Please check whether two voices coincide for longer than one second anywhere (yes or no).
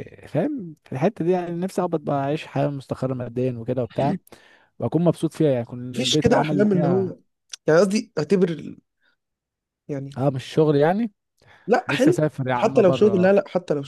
yes